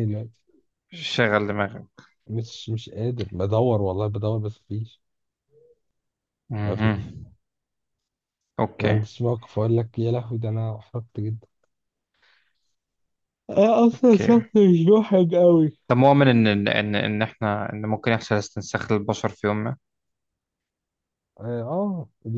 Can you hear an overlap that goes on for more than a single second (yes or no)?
no